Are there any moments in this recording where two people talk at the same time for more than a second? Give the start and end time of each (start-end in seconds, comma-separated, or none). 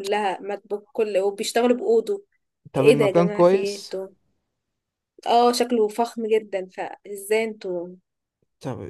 2.8-4.0